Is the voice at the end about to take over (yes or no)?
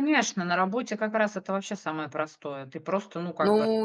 yes